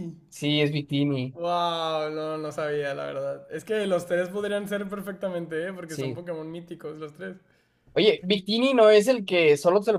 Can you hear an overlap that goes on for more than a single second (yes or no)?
no